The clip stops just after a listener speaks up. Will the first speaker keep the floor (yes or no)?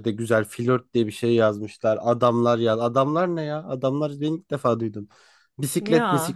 yes